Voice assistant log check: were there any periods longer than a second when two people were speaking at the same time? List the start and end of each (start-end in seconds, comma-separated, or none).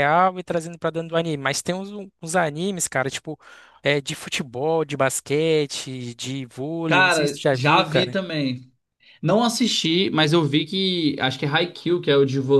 6.9-8.2